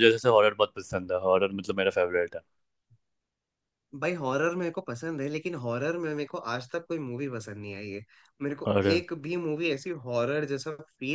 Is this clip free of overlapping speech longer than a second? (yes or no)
yes